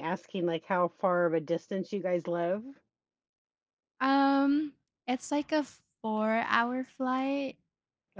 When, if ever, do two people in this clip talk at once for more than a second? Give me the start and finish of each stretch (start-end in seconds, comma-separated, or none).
none